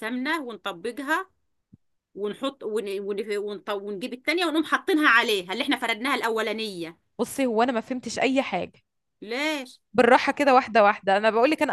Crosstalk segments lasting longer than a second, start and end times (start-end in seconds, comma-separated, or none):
none